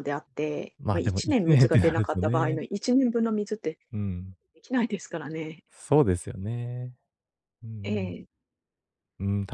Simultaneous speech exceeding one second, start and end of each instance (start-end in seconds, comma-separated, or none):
0.8-2.6